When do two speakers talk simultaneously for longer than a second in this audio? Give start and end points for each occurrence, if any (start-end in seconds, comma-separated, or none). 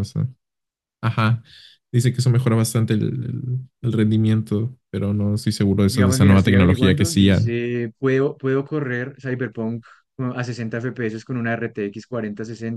5.9-7.5